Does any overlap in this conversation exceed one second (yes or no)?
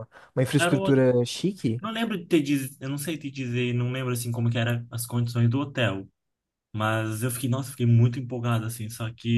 no